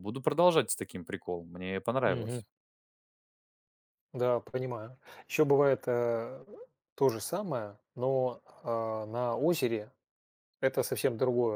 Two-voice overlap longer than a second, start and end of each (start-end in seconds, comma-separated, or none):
none